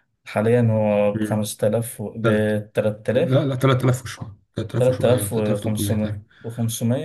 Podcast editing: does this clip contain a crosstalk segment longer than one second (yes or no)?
yes